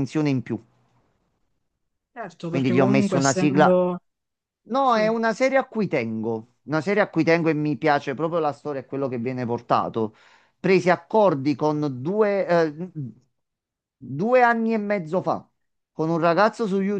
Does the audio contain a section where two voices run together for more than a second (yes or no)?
yes